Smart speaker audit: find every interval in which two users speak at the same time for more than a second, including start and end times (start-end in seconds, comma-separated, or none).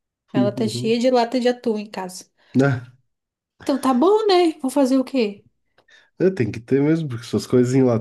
none